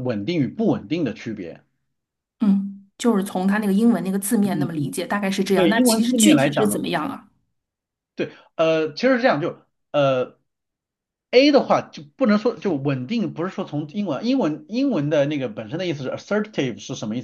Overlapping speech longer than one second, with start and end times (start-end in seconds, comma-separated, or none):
5.5-6.8